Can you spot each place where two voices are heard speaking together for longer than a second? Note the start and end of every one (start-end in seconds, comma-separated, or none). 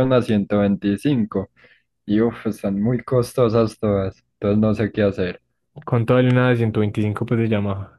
none